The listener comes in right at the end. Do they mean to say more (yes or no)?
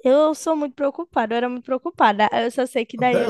no